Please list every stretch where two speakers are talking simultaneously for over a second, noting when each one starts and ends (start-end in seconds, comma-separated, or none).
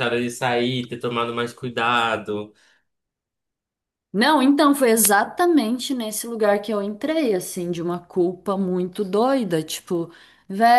none